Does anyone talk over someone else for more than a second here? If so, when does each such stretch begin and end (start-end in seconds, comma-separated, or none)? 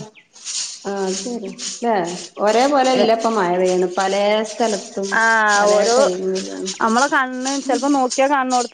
none